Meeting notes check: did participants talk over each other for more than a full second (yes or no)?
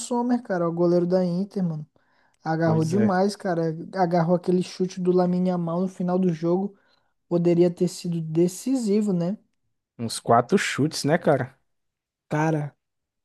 no